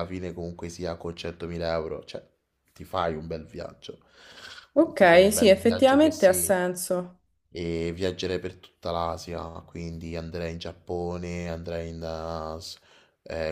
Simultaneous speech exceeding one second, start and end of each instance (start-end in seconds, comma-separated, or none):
5.0-6.5